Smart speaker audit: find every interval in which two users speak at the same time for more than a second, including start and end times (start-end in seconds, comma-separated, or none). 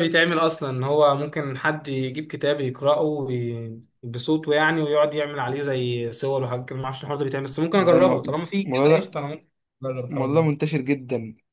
7.7-9.2